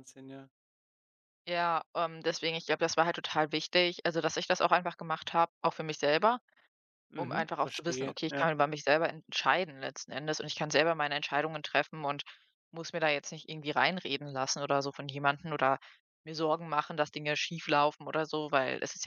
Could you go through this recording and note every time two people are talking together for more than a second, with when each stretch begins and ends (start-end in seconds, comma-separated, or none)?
7.2-8.5